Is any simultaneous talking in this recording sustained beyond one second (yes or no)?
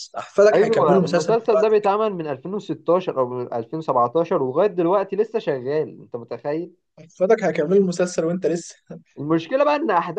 yes